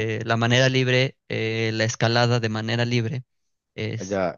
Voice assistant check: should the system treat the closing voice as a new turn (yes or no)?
yes